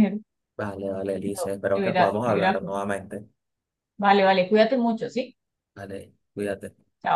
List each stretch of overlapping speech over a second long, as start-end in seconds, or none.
1.2-2.6